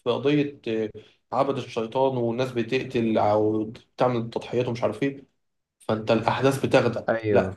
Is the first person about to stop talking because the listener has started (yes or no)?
no